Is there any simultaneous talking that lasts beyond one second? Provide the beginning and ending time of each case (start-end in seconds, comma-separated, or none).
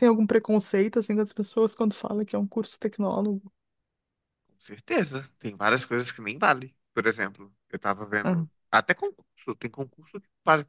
none